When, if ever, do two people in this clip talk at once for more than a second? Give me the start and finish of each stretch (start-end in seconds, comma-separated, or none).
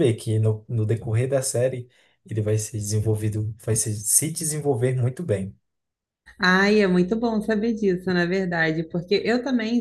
none